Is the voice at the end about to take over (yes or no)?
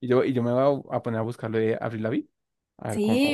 yes